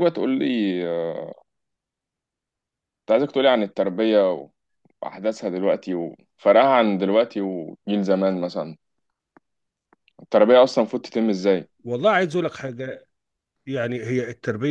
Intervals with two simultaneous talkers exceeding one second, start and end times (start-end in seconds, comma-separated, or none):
none